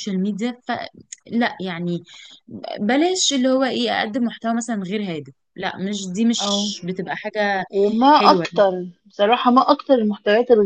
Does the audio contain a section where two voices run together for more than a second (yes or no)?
no